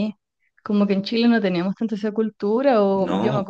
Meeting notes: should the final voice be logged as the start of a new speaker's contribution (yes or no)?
no